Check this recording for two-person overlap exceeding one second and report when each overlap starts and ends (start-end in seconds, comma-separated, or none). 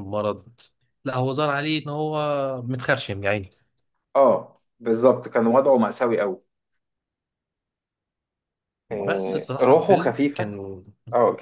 8.9-10.6